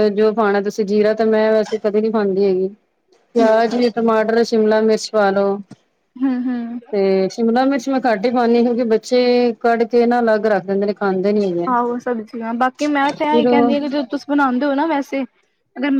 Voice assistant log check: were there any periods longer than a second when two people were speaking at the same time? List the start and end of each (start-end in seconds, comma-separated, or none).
none